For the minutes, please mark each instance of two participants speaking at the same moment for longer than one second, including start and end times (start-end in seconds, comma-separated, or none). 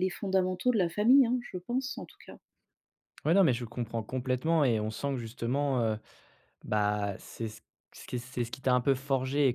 none